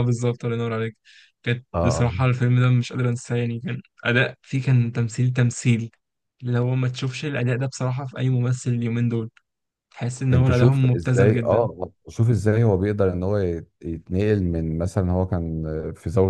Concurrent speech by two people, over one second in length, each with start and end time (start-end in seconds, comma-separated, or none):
10.3-11.7